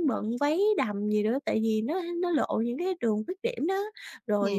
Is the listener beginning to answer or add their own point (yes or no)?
no